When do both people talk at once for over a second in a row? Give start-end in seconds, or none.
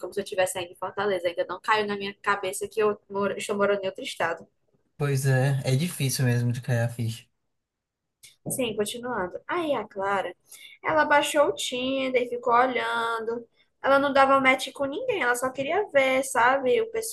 none